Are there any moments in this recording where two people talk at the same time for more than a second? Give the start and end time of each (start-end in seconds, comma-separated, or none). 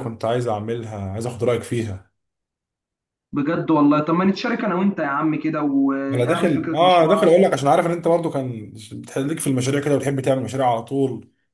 6.1-7.4